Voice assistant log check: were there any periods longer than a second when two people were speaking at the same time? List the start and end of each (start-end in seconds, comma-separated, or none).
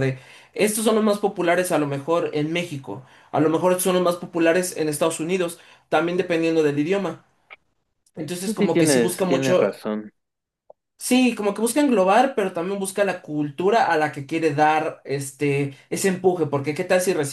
8.4-9.8